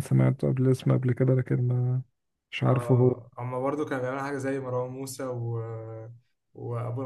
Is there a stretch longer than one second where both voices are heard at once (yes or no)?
no